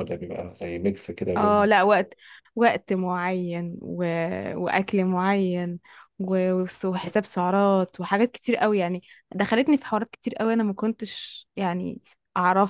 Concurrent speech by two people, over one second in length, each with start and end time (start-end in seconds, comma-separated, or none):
none